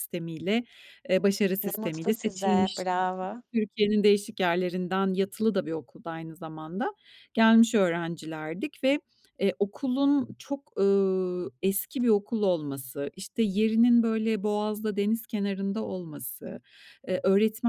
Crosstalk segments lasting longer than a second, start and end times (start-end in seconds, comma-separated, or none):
1.6-2.8